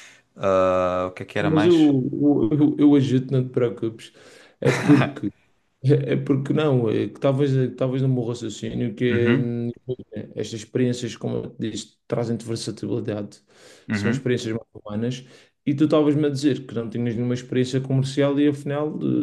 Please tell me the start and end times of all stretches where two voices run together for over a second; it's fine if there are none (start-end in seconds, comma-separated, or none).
none